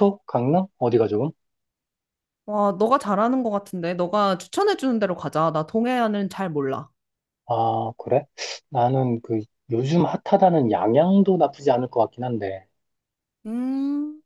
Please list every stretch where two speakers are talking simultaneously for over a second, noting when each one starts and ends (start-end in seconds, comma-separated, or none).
none